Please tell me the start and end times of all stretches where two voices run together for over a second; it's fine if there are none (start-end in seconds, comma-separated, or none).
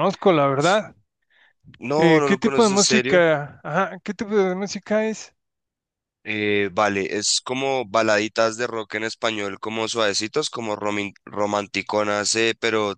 2.0-3.2